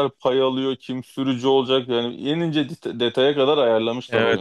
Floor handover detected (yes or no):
yes